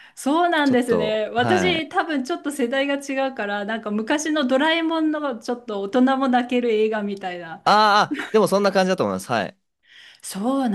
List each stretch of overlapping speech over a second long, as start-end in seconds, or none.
0.6-1.9